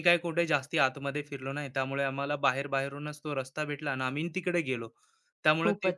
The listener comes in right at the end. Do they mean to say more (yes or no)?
no